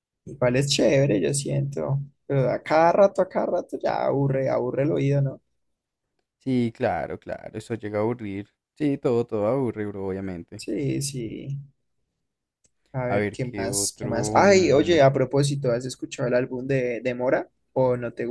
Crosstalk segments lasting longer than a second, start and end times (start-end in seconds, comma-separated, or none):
13.1-15.0